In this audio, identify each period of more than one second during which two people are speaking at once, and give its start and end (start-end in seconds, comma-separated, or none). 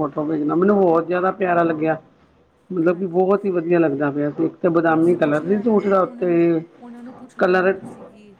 none